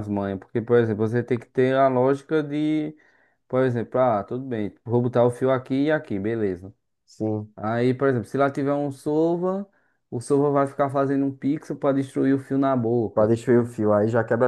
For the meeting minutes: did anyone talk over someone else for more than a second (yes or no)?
no